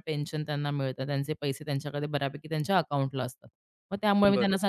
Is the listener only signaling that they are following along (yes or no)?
yes